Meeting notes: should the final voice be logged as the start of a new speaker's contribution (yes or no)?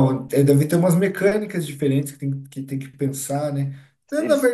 no